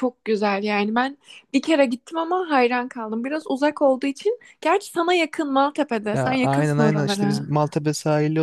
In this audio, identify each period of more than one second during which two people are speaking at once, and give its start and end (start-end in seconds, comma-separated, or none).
6.1-7.4